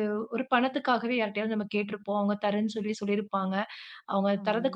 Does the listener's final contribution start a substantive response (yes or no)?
no